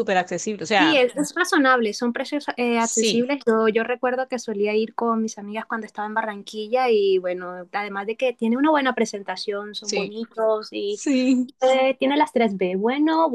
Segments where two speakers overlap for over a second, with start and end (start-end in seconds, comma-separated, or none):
none